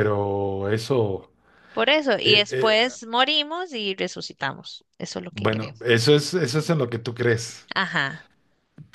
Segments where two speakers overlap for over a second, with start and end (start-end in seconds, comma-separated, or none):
none